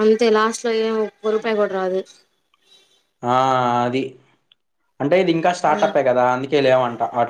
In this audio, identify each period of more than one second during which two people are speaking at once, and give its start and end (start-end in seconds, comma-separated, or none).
none